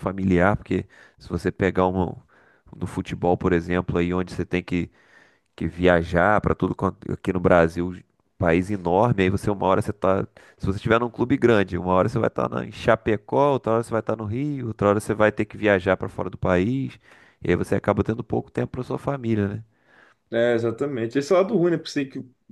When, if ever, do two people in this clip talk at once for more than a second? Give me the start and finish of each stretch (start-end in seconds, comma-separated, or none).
none